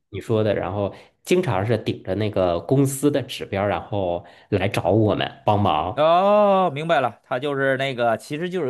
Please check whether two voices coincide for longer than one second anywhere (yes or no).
no